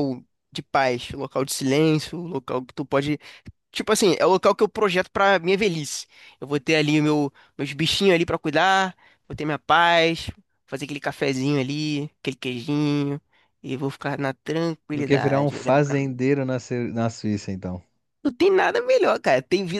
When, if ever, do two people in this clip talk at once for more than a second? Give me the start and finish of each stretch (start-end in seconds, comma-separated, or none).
14.9-16.2